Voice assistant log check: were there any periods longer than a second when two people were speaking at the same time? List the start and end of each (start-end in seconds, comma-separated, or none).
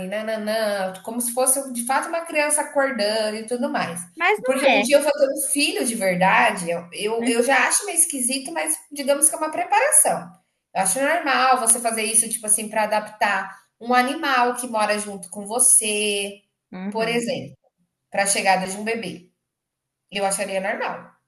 none